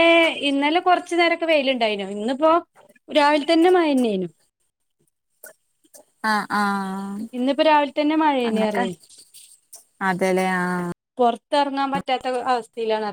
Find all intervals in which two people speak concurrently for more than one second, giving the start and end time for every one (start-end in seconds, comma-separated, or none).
none